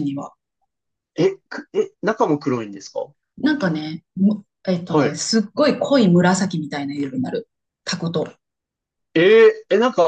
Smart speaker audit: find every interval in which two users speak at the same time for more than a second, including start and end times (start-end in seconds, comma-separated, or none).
none